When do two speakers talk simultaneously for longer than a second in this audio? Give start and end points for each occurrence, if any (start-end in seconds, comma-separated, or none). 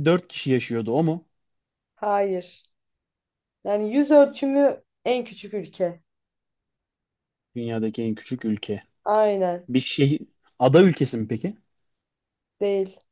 none